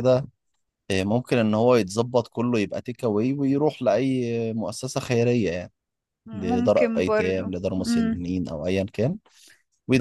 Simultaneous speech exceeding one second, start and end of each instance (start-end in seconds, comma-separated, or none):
6.3-8.2